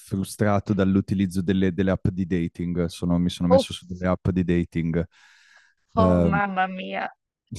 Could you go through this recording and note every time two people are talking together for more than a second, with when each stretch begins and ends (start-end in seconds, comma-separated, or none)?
none